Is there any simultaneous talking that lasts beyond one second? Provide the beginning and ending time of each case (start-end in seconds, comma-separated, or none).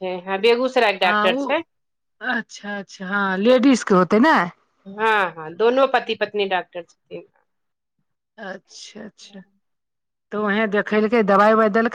none